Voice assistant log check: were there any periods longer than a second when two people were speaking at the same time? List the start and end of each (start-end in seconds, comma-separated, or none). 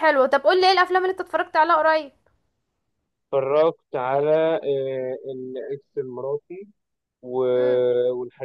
none